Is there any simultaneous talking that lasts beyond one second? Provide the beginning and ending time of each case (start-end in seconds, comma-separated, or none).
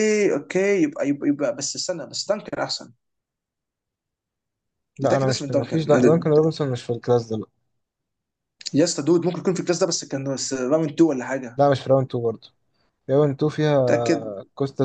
5.0-6.4